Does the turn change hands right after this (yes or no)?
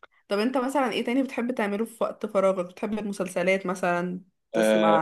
yes